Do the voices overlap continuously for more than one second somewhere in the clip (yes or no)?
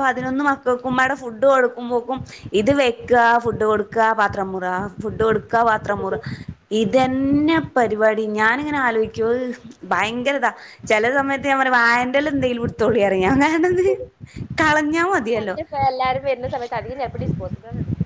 no